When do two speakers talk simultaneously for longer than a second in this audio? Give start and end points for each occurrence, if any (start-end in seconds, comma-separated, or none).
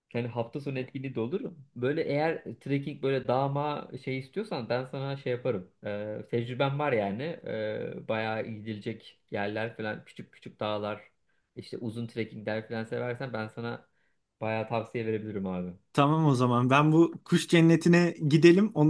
none